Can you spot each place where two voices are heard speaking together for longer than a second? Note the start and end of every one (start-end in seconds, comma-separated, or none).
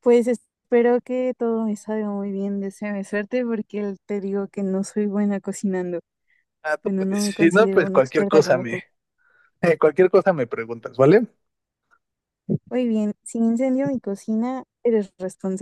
6.8-8.8